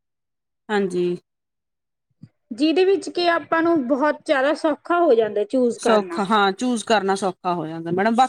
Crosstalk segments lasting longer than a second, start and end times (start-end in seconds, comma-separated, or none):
none